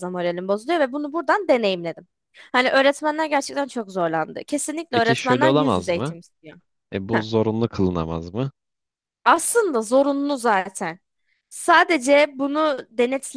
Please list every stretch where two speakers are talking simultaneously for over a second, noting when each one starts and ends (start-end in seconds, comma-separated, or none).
4.9-6.2